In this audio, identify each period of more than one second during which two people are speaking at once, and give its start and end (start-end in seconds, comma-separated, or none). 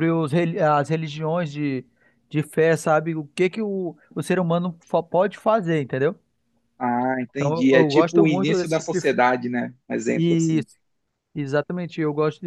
7.3-9.2